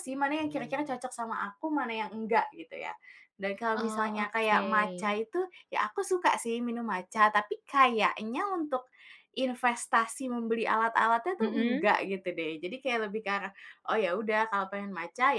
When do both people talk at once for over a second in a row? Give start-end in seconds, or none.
3.7-5.2